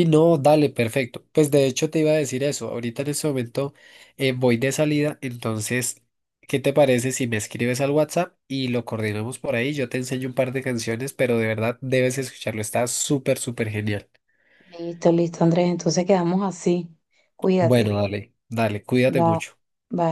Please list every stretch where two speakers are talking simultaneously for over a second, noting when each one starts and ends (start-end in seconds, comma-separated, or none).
none